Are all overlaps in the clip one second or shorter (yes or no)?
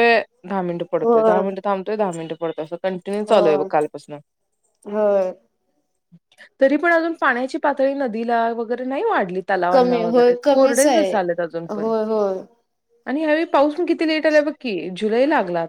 no